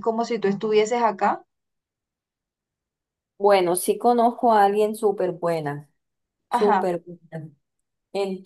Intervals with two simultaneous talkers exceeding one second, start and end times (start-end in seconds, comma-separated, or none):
none